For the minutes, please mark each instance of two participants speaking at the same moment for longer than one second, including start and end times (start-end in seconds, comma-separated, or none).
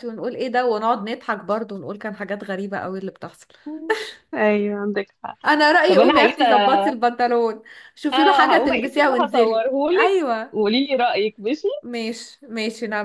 8.1-10.5